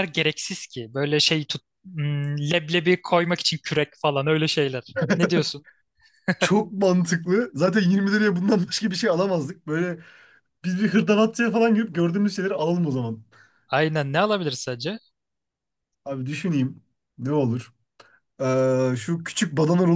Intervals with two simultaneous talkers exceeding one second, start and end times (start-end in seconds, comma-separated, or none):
none